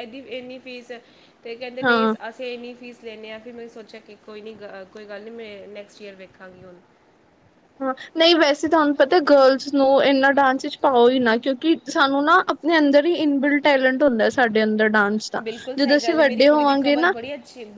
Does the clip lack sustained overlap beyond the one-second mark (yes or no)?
no